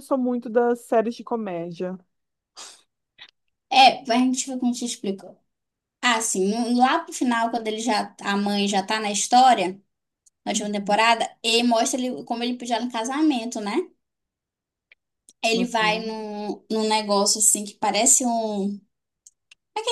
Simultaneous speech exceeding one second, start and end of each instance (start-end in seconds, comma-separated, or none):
none